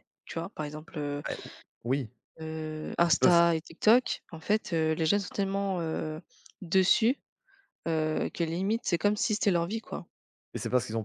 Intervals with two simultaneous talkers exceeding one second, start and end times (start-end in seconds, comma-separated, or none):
none